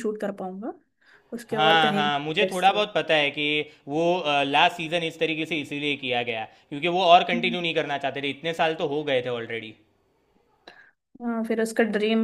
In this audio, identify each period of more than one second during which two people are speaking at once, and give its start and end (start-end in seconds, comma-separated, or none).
1.5-2.8